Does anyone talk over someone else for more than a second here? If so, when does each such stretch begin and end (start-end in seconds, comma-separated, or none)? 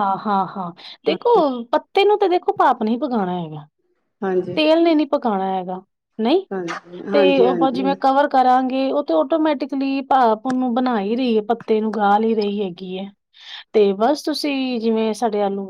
none